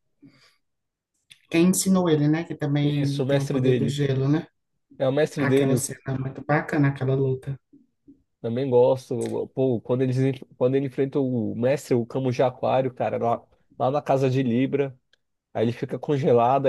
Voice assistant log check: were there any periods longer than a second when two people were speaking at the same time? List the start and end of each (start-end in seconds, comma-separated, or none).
2.8-4.0